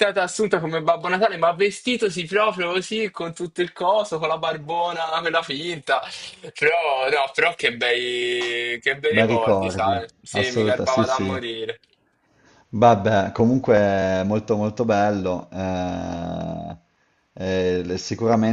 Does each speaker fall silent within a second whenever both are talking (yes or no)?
no